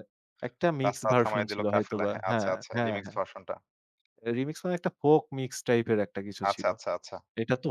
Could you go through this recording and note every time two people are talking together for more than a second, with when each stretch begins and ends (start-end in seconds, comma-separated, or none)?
0.8-3.2